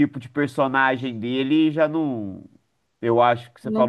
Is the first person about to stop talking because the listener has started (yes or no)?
no